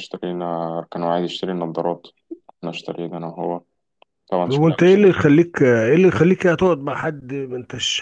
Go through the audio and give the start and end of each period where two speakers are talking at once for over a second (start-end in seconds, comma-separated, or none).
none